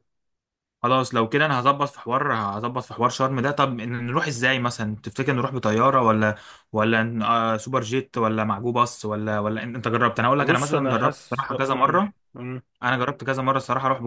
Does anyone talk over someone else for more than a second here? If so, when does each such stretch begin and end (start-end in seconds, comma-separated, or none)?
10.4-12.1